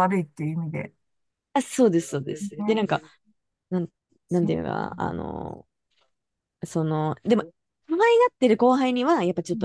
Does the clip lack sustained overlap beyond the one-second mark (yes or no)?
yes